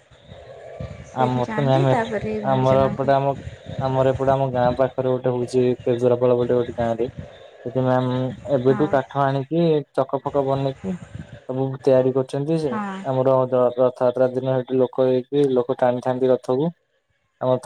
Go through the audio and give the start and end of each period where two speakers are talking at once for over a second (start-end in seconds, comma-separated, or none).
1.2-3.1